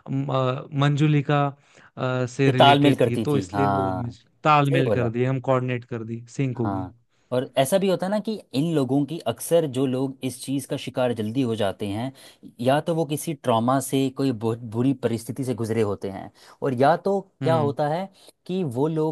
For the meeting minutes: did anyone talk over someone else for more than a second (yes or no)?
yes